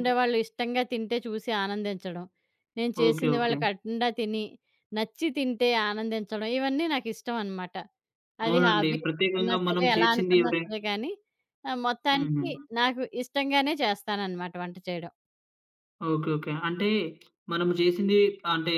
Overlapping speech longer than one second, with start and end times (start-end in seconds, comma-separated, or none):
8.5-10.7